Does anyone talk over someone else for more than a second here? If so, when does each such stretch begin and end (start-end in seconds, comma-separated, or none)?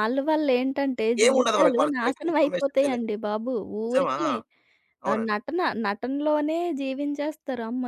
1.2-3.0